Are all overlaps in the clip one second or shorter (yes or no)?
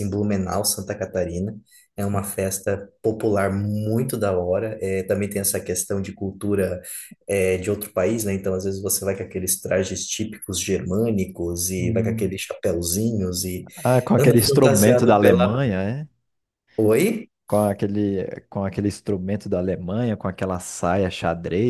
no